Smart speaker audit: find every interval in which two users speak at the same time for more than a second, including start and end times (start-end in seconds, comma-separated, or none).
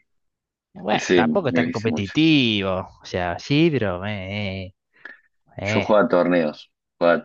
0.9-2.1